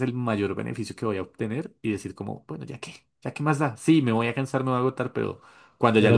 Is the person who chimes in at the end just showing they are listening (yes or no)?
yes